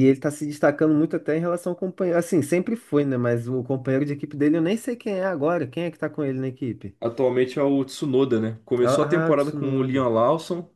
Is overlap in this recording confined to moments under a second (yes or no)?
no